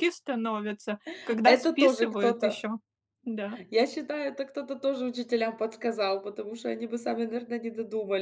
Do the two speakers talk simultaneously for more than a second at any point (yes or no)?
yes